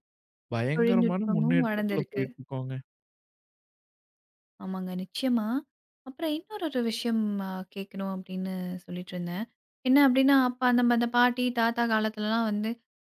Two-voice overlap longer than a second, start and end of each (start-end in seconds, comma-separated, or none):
0.7-2.2